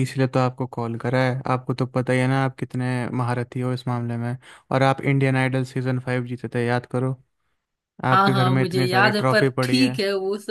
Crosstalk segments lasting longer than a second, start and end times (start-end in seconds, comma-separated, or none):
8.1-9.9